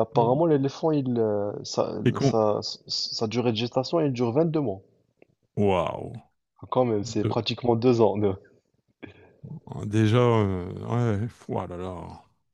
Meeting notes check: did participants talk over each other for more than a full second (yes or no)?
no